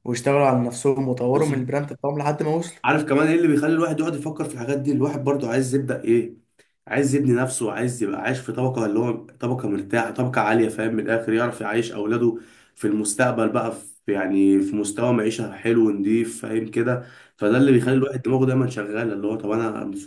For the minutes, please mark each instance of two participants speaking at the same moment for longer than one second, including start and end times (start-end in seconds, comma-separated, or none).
none